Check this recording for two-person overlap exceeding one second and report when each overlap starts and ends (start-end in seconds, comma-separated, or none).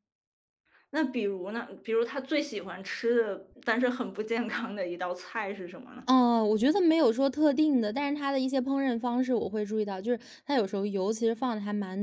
none